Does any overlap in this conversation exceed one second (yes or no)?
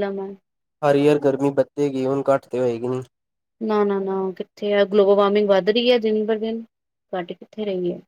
no